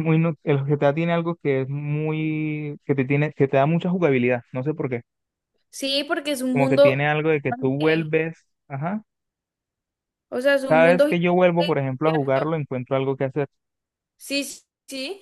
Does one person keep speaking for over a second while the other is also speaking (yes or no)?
yes